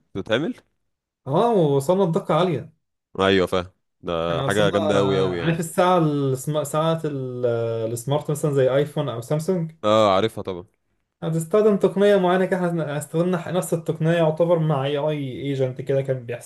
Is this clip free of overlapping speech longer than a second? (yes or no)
no